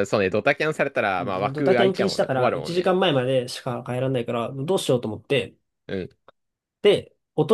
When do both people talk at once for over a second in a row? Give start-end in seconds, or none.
1.2-3.0